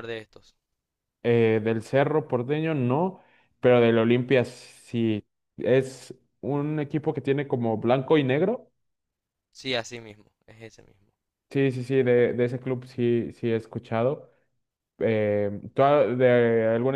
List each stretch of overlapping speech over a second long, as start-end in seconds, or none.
none